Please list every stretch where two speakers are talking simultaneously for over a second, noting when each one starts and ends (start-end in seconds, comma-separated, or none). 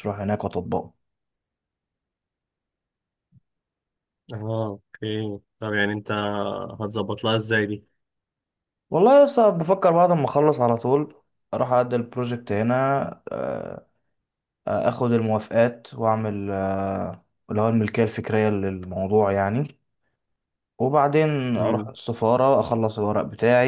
none